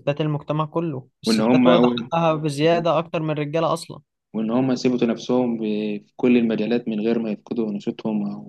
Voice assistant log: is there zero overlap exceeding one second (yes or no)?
yes